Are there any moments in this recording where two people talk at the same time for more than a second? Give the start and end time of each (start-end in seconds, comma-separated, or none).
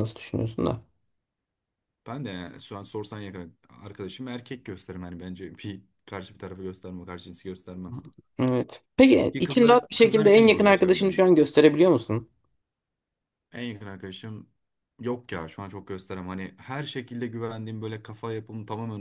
9.3-11.2